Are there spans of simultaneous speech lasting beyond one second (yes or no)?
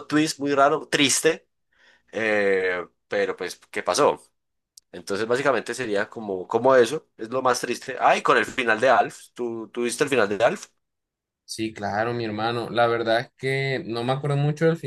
no